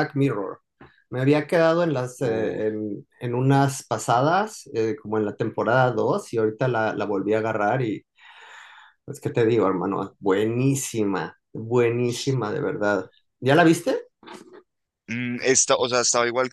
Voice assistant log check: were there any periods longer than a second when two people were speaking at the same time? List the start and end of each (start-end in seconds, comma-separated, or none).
none